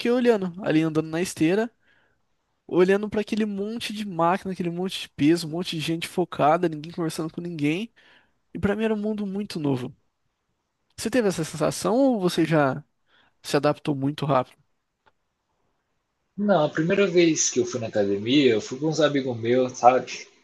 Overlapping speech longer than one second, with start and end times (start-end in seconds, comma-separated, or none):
none